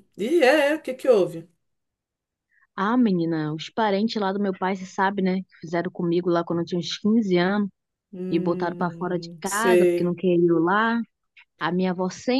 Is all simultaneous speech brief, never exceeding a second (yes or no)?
no